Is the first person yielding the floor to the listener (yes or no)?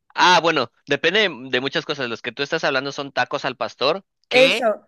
no